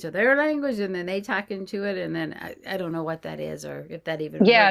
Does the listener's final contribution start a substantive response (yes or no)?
yes